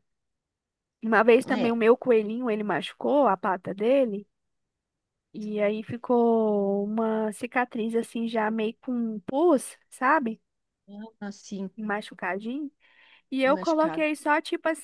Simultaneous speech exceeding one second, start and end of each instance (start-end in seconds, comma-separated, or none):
none